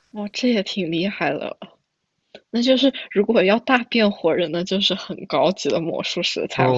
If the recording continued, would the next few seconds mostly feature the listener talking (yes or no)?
yes